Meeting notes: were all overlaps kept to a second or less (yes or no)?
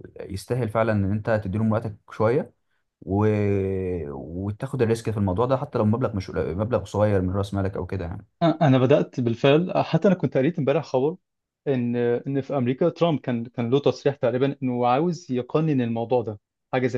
yes